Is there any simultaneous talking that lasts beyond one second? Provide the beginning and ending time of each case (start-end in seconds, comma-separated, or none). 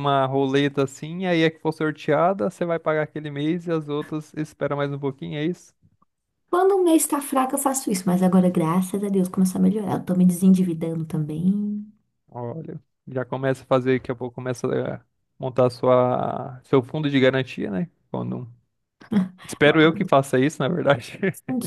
none